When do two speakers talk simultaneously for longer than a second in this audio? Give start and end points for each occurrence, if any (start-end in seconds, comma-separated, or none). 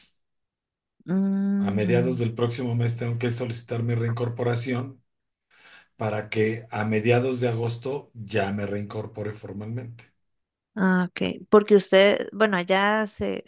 none